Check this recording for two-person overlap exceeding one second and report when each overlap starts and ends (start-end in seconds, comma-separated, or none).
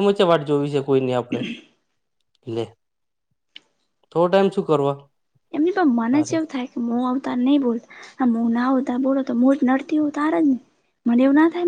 none